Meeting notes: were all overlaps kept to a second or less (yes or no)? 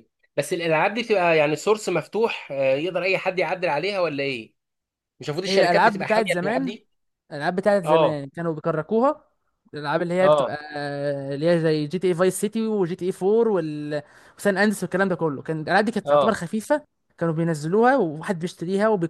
no